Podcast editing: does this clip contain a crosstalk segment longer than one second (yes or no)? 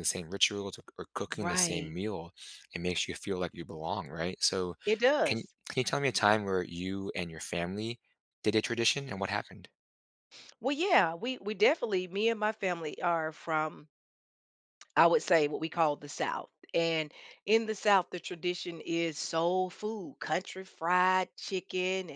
no